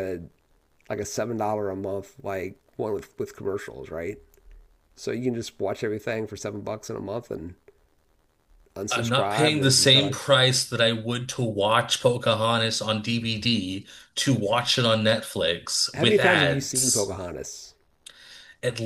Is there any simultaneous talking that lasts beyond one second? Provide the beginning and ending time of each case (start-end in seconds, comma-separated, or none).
8.9-10.2, 15.9-17.1